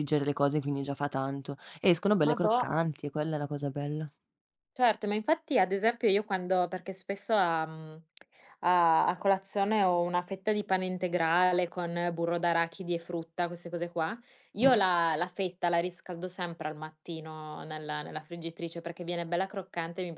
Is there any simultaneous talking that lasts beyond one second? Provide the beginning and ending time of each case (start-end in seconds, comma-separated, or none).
none